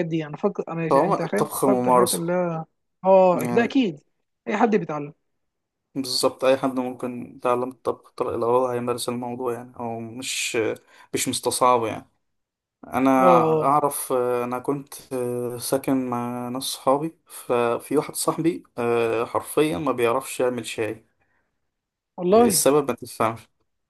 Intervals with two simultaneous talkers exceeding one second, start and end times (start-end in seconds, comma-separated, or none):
0.9-2.2